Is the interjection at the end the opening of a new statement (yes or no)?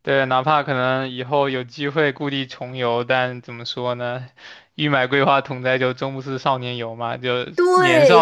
yes